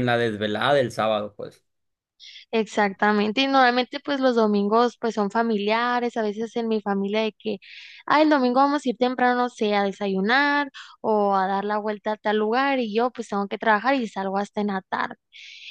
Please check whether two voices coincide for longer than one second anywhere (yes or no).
no